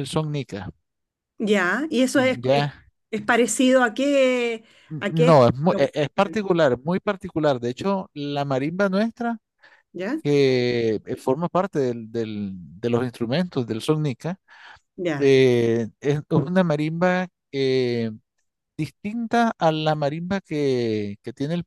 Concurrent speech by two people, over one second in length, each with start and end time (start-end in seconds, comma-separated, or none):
5.0-6.4